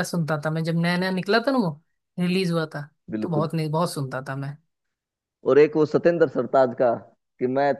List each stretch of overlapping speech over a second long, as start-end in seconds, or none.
none